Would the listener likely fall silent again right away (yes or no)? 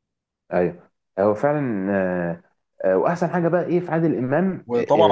no